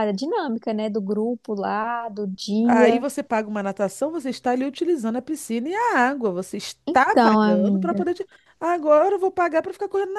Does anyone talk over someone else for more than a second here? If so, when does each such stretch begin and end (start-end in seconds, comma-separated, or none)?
6.9-8.1